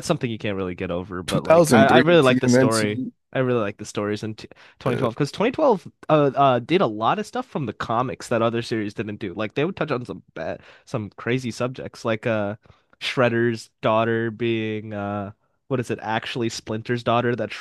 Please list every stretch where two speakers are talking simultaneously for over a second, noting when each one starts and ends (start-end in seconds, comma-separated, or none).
1.3-3.1